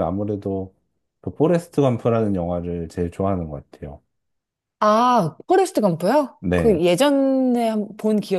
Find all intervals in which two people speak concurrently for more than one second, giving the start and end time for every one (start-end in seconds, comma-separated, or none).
none